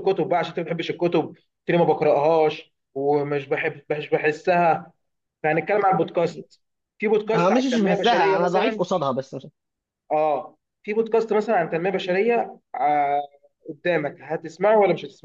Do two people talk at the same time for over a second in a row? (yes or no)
yes